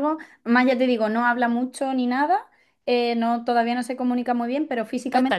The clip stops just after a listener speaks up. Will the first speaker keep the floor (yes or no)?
yes